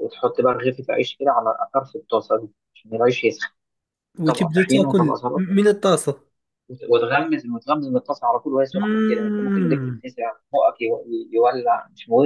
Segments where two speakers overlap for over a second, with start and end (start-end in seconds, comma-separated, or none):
4.3-5.6, 8.7-10.0